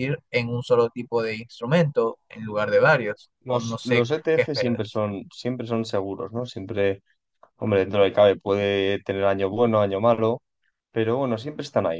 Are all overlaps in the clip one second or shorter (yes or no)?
no